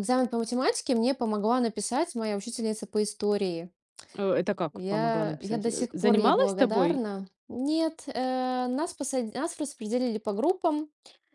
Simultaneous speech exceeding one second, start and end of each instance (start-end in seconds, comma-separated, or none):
4.7-7.0